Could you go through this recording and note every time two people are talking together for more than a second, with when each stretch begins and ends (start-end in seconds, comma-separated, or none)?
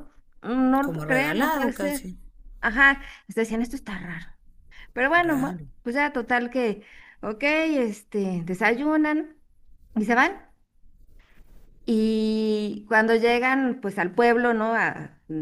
0.8-2.1